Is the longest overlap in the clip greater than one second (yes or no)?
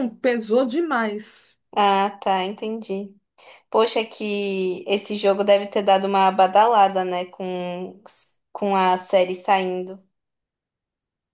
no